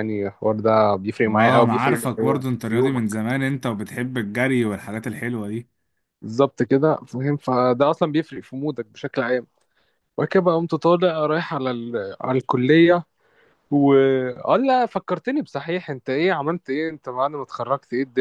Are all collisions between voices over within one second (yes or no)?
no